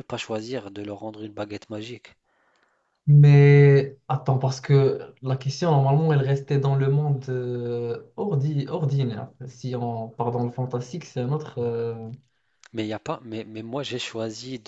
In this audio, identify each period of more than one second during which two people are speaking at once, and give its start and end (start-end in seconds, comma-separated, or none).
none